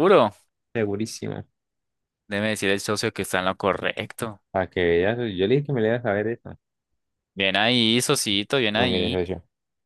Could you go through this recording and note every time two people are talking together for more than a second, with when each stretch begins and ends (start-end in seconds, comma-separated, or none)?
none